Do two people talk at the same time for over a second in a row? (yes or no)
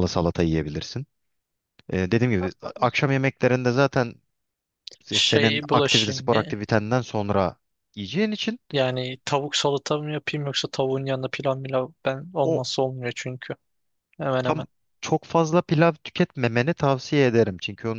yes